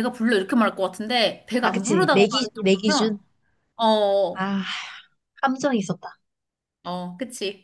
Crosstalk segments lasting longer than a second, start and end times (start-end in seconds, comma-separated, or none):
1.6-3.2